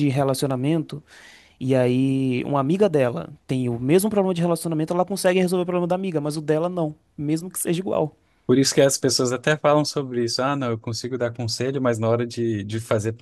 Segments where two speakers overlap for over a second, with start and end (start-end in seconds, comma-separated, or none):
none